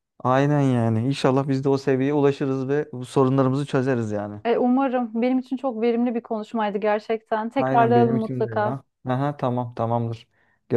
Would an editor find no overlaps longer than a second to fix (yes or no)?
no